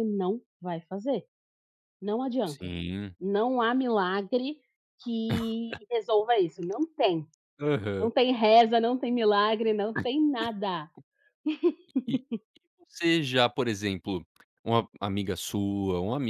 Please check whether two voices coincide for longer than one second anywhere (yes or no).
no